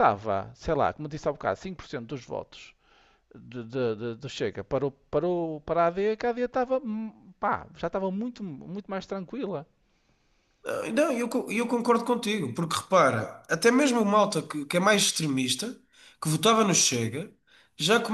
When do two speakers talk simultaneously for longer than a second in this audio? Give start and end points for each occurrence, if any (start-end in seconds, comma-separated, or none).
none